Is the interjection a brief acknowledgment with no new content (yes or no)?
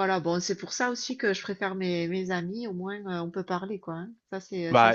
no